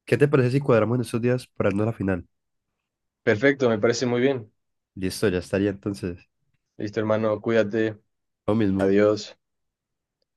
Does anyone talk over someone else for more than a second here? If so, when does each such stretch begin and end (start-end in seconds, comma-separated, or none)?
none